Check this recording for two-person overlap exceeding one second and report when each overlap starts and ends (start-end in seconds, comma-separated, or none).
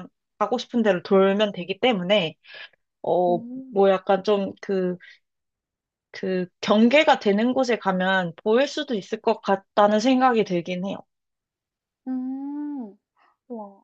none